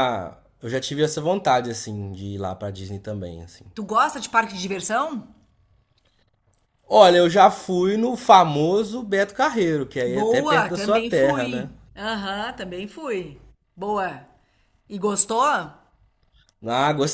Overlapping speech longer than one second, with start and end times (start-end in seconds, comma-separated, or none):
10.1-11.7